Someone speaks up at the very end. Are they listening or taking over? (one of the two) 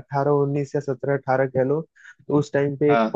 listening